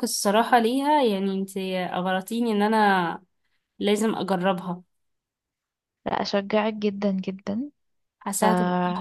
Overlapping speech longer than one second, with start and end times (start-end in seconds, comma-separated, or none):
none